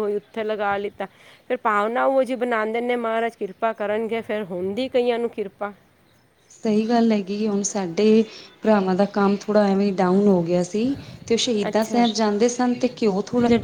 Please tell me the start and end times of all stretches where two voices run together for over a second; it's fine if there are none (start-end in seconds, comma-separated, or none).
none